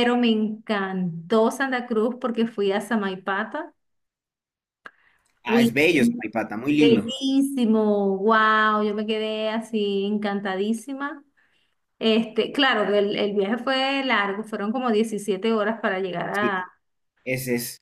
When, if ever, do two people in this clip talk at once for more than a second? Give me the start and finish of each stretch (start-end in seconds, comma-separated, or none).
none